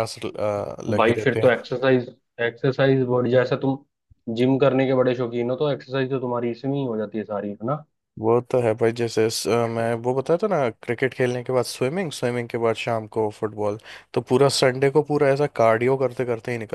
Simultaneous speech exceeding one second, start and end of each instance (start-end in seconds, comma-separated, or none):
none